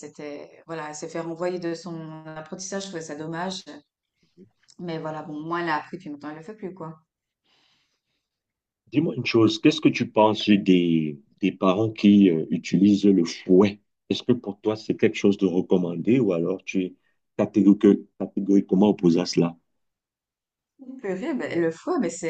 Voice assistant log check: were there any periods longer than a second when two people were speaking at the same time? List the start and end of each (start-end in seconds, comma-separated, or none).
none